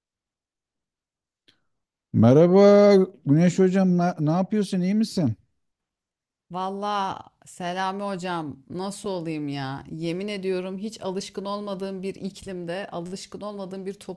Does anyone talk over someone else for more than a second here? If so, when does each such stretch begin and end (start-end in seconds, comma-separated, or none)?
none